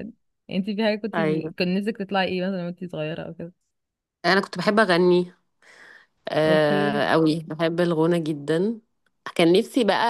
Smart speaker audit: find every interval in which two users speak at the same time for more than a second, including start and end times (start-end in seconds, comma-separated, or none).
none